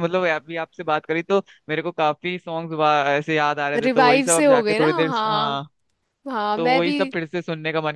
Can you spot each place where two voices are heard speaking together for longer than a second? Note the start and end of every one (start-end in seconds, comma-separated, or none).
3.8-5.6